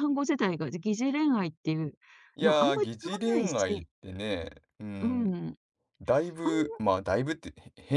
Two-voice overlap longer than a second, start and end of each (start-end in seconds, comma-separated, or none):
2.4-3.9